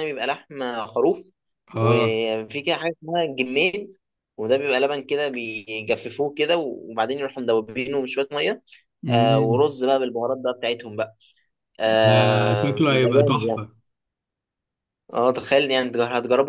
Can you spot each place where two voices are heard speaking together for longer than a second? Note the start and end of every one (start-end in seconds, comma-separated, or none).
12.0-13.6